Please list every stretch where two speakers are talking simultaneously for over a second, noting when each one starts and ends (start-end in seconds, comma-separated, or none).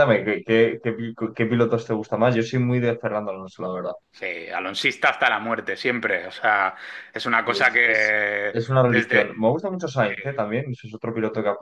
7.4-9.2